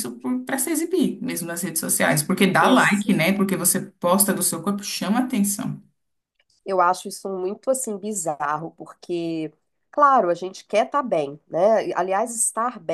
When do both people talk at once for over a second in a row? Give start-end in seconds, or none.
none